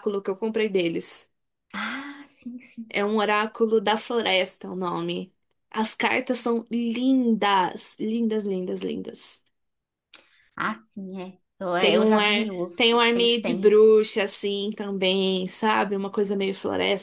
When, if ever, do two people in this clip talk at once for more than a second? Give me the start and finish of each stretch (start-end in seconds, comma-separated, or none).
11.8-13.8